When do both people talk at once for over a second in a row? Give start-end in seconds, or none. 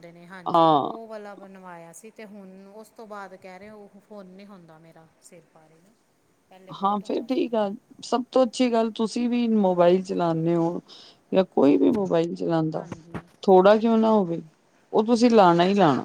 none